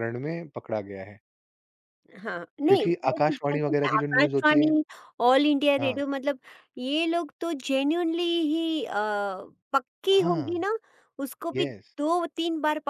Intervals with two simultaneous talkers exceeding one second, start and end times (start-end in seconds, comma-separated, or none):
2.7-4.7